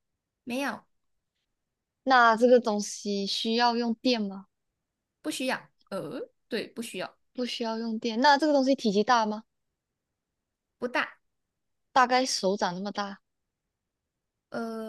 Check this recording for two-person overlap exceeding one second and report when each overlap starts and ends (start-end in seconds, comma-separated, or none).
none